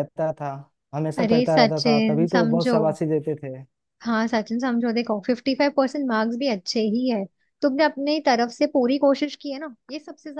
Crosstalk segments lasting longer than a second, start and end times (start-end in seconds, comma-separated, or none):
1.2-2.8